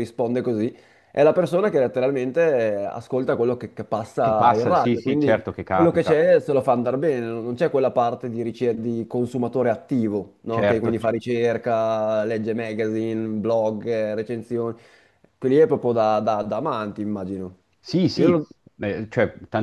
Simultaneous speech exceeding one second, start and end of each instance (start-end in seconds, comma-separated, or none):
4.2-6.2